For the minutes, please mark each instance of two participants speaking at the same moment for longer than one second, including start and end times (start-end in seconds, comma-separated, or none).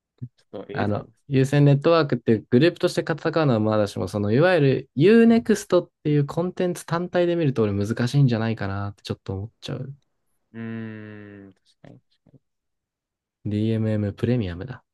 none